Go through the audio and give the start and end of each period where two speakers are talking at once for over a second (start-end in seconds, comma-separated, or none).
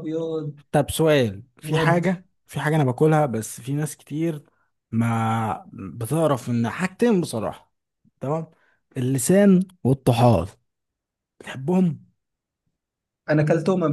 none